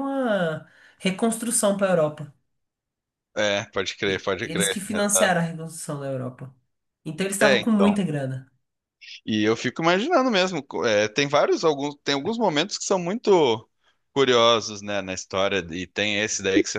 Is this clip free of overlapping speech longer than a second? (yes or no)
no